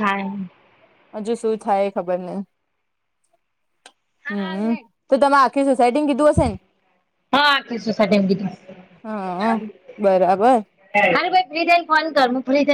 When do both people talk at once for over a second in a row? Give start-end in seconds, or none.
none